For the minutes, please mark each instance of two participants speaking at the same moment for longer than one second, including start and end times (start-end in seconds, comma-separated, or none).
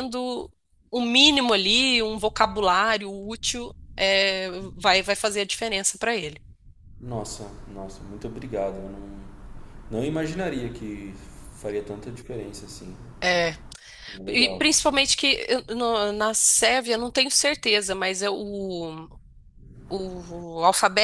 none